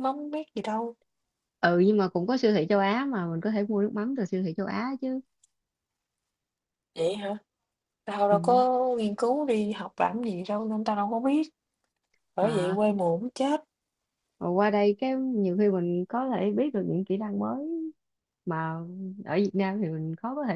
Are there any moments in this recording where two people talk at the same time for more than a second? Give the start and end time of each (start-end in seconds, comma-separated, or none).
none